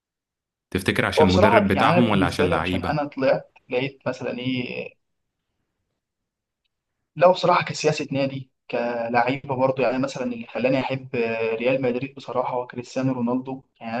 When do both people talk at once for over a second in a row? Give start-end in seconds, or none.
1.2-3.0